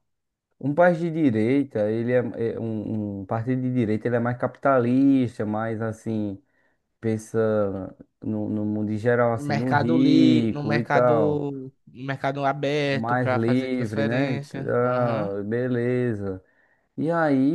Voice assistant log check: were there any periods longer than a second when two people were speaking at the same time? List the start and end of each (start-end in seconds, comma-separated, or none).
9.3-11.5, 12.9-15.3